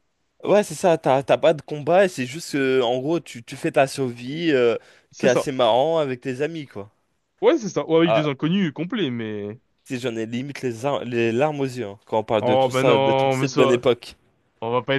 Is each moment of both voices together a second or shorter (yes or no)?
no